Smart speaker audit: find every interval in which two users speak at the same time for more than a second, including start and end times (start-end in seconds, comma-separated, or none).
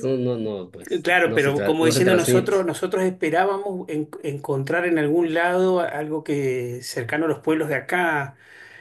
0.9-2.7